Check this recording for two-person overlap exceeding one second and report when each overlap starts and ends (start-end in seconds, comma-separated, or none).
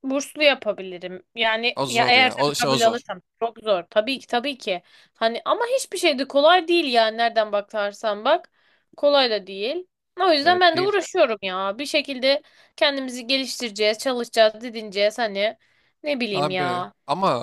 1.8-3.0